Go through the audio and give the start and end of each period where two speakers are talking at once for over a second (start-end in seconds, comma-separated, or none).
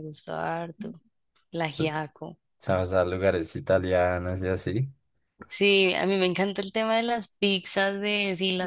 none